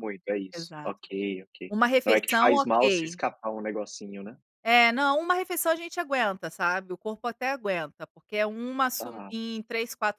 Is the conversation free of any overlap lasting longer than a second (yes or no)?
no